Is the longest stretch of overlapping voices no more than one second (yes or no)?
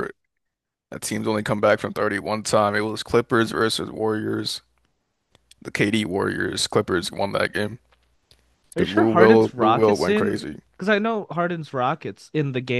no